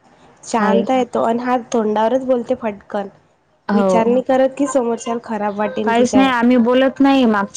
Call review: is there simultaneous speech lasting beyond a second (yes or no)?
no